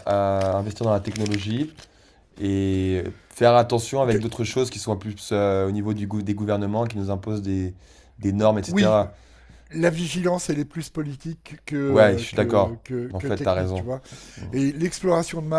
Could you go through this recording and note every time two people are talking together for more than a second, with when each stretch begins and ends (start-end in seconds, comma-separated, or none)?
11.9-13.9